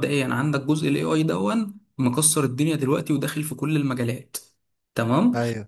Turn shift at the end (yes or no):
no